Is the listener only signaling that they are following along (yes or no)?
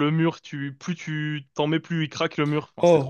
no